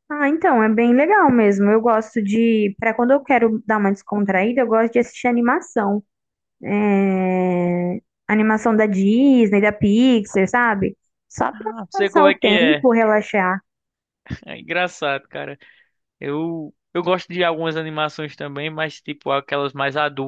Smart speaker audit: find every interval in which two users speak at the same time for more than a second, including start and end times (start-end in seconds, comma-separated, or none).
11.5-12.9